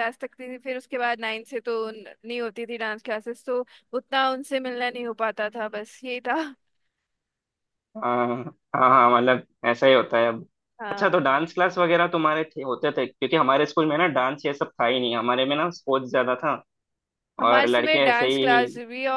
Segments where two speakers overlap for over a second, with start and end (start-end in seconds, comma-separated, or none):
17.4-18.7